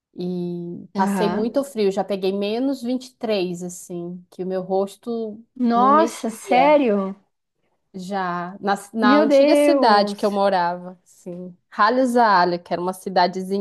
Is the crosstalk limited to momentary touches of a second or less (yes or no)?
no